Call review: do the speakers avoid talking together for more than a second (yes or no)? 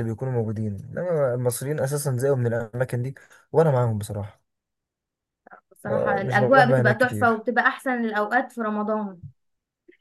no